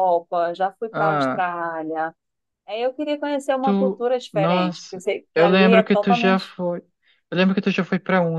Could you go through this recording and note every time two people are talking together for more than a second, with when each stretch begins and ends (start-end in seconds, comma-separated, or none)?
3.6-6.5